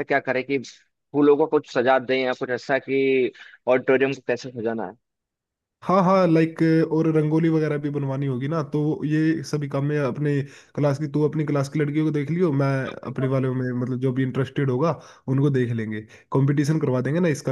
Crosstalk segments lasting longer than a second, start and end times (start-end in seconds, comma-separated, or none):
none